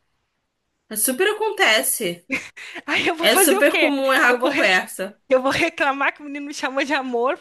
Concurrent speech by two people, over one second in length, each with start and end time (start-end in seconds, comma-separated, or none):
3.2-4.7